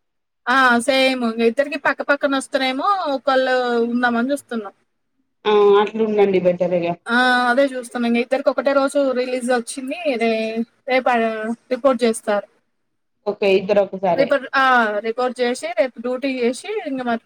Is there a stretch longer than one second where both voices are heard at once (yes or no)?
no